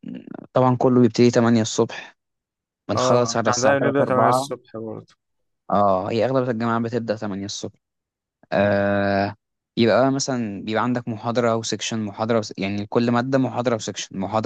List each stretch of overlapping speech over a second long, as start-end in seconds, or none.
3.0-4.5